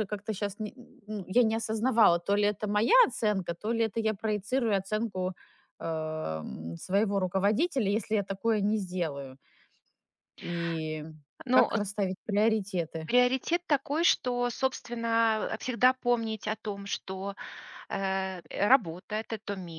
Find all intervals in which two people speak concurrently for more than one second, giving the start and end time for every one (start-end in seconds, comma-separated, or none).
none